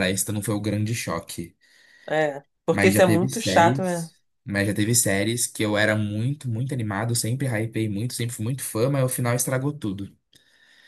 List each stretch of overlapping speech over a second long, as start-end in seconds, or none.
2.7-4.1